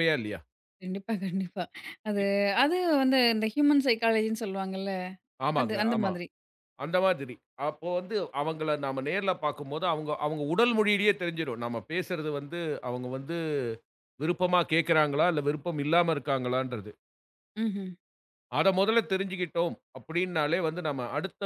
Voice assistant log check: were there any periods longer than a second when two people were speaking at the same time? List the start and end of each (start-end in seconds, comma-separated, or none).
none